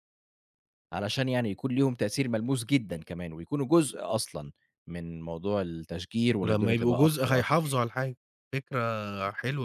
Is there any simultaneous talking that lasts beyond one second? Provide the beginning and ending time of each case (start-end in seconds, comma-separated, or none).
6.4-7.8